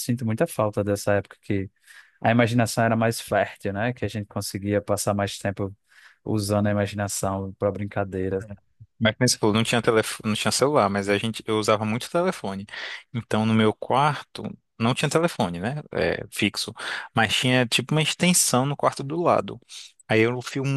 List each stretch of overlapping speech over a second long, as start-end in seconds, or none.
none